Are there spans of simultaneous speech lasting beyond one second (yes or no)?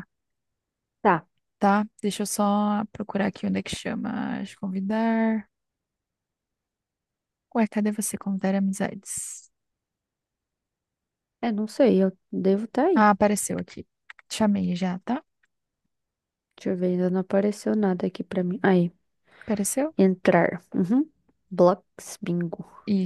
no